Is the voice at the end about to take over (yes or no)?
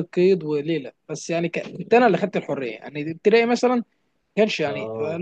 no